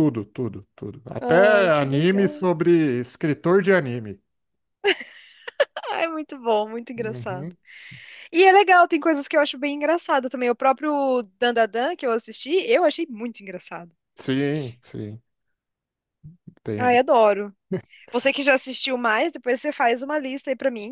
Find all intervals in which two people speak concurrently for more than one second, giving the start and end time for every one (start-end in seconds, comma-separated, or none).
1.2-2.4